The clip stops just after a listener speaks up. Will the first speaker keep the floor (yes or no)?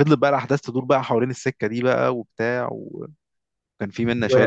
no